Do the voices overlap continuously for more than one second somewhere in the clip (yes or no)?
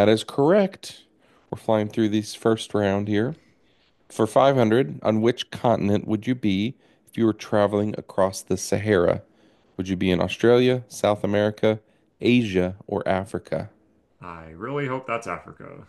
no